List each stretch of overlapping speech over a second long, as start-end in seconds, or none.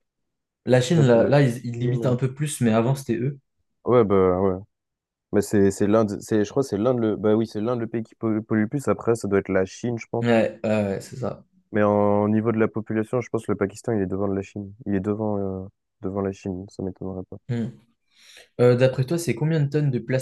0.9-2.2